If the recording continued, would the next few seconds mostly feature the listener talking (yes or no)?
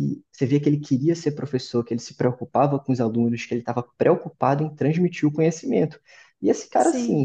no